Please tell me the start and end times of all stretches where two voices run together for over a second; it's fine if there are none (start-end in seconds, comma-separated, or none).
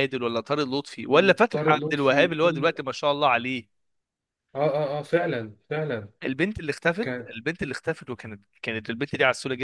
1.1-2.7